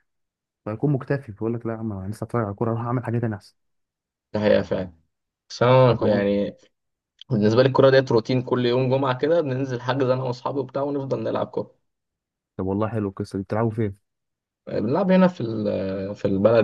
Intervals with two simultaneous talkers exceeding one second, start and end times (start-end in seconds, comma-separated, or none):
none